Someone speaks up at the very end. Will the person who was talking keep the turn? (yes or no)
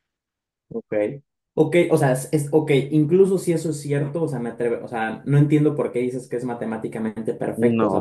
no